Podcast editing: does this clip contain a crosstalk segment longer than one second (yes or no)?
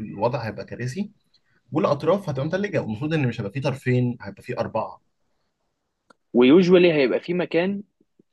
no